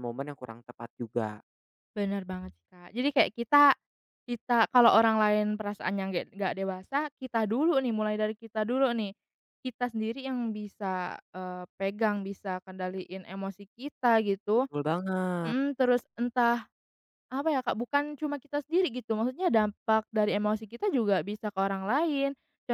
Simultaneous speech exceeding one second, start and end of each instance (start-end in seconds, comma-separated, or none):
none